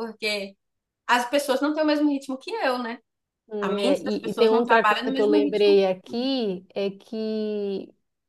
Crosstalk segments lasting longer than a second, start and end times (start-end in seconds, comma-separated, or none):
3.6-5.8